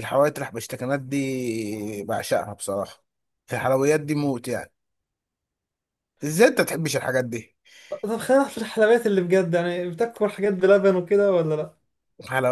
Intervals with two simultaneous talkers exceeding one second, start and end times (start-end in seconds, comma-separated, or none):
none